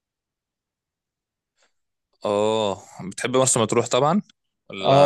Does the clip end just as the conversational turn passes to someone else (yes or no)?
yes